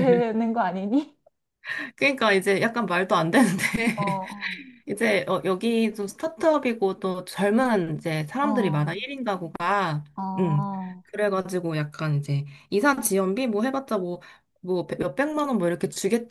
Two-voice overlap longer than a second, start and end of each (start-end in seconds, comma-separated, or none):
none